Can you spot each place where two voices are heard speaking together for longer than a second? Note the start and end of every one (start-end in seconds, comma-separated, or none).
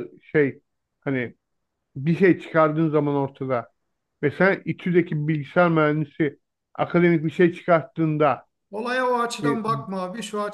none